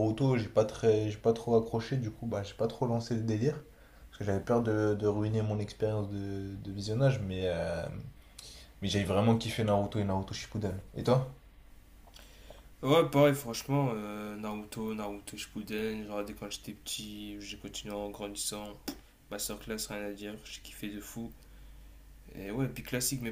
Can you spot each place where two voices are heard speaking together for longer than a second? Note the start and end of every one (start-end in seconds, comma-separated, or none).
none